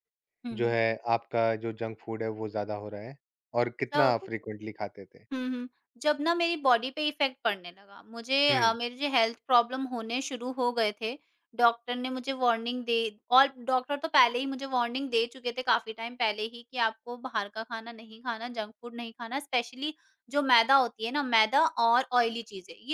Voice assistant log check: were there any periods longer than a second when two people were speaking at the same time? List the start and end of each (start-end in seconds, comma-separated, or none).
none